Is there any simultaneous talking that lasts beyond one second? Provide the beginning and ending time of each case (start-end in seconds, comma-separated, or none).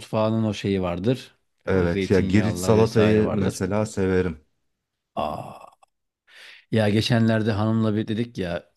1.7-3.6